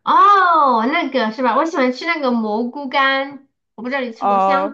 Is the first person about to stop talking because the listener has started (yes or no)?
yes